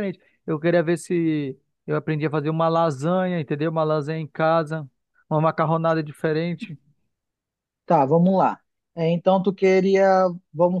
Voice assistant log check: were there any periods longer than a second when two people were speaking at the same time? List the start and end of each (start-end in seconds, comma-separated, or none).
none